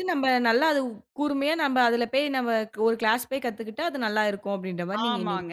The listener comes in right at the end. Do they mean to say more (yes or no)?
yes